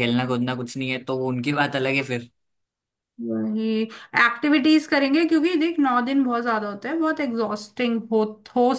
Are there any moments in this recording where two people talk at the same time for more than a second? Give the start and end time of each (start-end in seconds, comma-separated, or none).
none